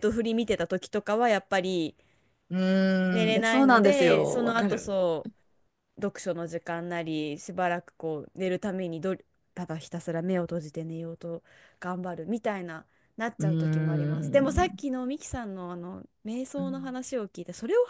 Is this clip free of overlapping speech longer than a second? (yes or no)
no